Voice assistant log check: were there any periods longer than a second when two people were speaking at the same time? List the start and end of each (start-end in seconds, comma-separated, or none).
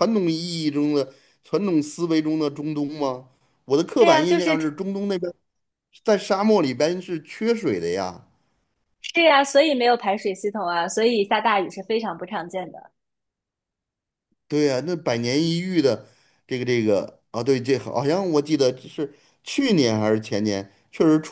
none